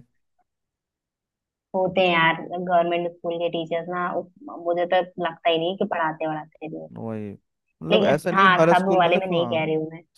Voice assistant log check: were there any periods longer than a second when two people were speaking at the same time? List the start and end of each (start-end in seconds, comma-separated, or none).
7.9-9.6